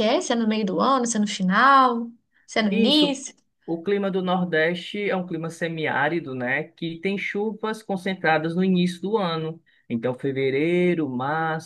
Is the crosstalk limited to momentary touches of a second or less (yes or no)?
yes